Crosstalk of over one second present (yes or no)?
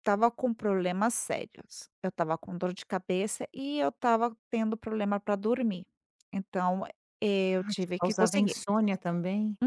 yes